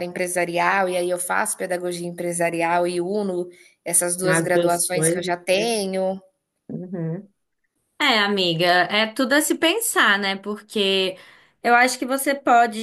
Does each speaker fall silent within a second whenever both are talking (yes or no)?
no